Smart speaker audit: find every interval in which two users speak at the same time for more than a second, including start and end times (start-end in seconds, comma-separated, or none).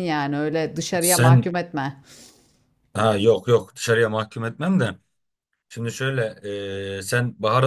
none